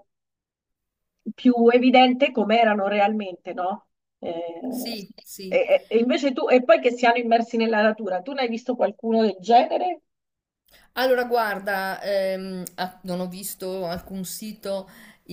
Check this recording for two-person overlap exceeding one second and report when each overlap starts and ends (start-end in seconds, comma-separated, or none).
none